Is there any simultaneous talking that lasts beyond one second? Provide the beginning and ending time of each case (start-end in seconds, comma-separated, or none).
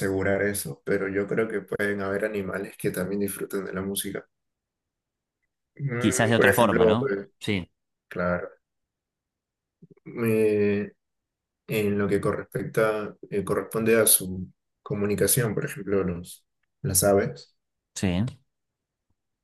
6.0-7.3